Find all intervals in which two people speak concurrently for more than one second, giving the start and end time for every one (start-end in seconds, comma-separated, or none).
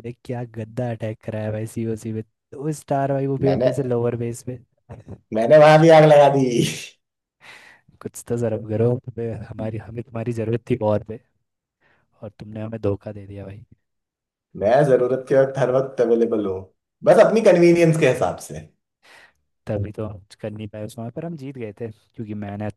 none